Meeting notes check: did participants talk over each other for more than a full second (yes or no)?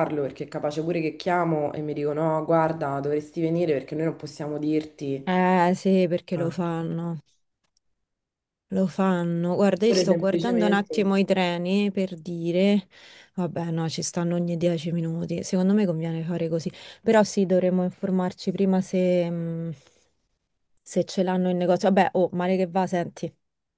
yes